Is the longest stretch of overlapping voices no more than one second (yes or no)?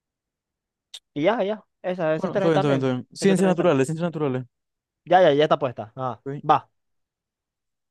no